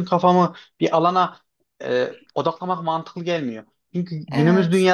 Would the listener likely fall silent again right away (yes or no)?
yes